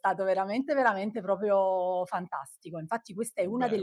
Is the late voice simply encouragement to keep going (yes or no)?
yes